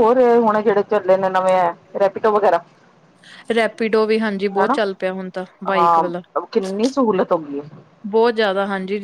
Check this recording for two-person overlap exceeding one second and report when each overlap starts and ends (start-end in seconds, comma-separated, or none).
none